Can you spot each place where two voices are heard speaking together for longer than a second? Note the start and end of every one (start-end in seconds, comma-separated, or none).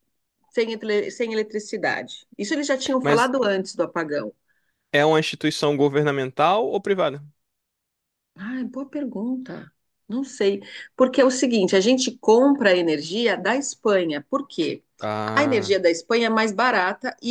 none